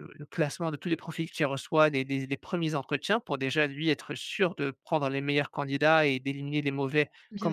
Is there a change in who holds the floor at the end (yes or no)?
no